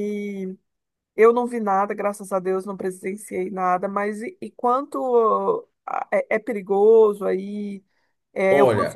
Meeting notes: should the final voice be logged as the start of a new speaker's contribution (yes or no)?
yes